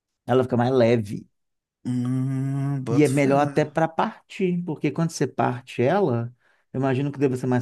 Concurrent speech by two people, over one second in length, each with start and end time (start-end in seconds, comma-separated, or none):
none